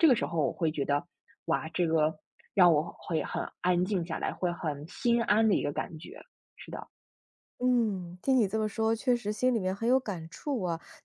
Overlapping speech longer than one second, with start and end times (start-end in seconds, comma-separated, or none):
none